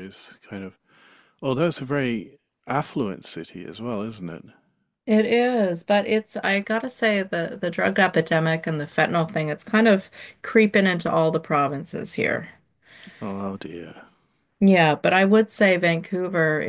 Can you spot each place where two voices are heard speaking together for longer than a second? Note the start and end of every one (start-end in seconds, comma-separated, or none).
none